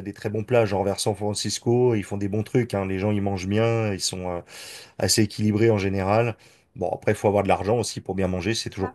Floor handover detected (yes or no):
no